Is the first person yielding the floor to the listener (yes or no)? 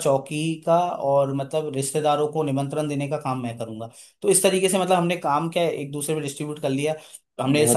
no